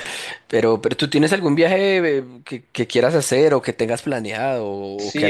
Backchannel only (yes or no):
no